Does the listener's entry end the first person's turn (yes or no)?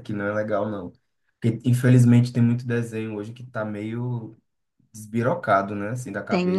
yes